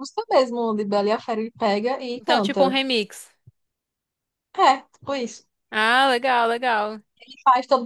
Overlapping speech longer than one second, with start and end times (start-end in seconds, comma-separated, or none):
none